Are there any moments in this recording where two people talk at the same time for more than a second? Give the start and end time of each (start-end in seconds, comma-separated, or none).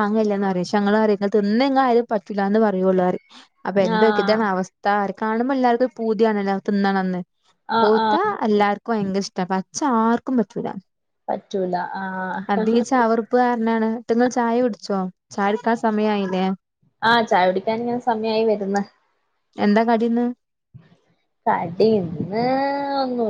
none